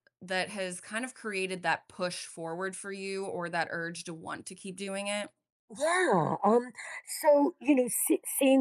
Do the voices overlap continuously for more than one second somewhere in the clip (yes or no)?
no